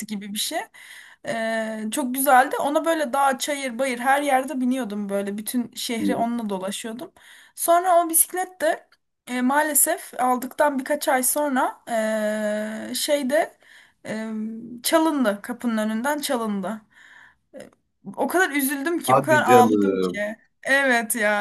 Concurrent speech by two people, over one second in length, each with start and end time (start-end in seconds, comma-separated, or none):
19.0-20.2